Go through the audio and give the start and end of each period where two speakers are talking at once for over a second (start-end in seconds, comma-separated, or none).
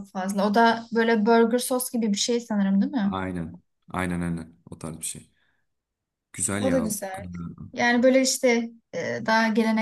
none